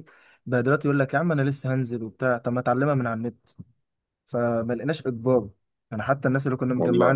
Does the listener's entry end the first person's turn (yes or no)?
no